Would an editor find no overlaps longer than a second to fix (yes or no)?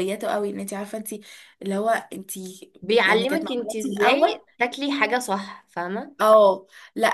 no